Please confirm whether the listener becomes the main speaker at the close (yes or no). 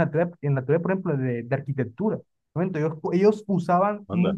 no